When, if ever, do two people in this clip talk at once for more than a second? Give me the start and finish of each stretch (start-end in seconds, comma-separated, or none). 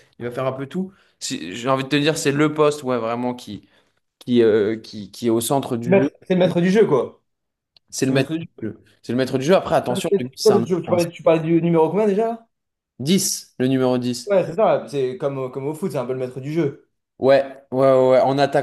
none